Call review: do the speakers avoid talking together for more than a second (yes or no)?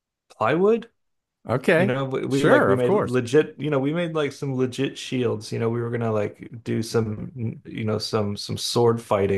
no